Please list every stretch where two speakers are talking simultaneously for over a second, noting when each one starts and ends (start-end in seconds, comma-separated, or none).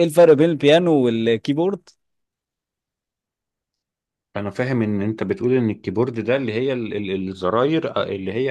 none